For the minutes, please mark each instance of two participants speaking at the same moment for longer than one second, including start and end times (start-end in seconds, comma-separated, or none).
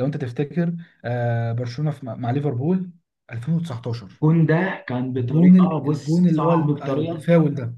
5.2-7.3